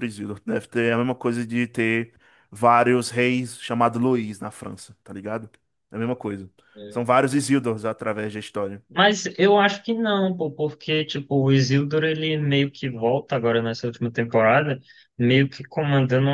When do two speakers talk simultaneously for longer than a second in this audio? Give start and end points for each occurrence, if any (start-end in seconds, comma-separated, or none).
none